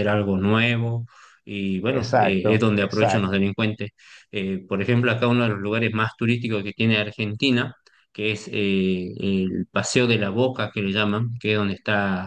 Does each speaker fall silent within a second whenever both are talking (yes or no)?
no